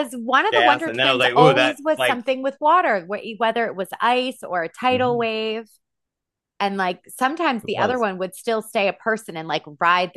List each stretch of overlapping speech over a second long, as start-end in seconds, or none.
0.5-2.3